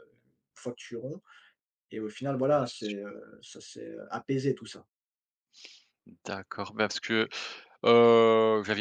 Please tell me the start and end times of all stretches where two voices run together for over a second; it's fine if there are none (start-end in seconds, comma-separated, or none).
none